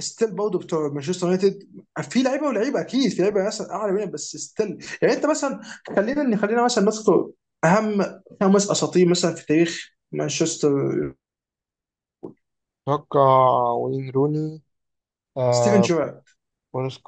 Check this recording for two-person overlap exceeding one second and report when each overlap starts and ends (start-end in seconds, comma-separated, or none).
none